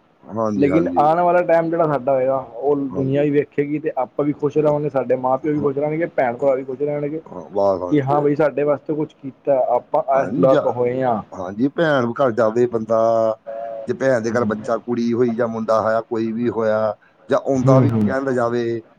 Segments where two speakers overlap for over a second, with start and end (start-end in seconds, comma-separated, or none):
none